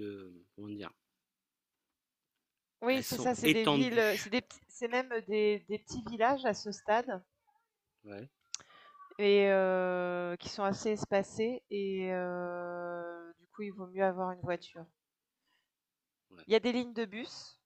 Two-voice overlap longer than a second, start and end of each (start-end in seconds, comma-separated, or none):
2.9-4.3